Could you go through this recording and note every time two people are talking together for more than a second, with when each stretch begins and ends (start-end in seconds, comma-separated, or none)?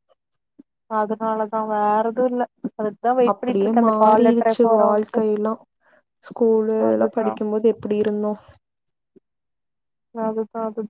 3.3-5.2